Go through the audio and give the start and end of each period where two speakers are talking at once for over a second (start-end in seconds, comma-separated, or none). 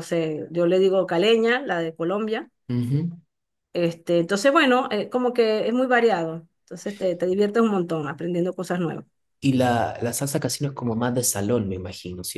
none